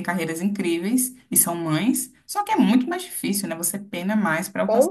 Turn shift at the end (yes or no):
yes